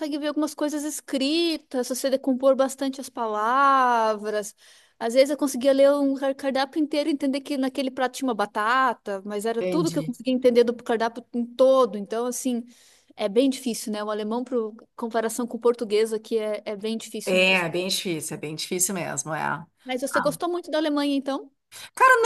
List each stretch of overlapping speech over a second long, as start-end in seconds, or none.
none